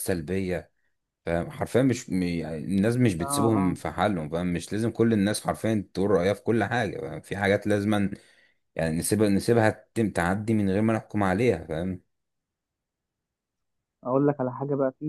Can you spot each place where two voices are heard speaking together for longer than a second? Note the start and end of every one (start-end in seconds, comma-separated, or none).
none